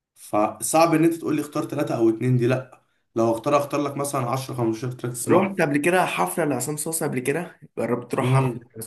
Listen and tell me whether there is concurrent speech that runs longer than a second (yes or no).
no